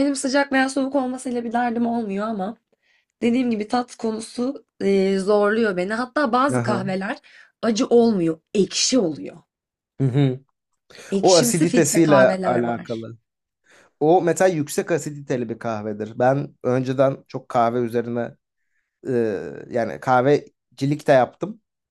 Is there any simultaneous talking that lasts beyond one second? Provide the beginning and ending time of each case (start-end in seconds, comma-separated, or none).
11.2-13.1